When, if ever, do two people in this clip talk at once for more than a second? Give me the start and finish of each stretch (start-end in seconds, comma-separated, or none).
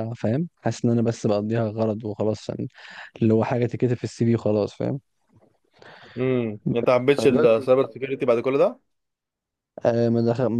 none